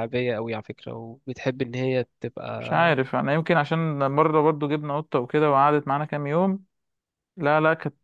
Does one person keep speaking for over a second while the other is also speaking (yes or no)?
no